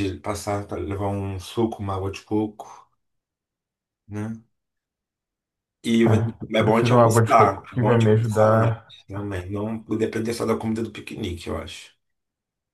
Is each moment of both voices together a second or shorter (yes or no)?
no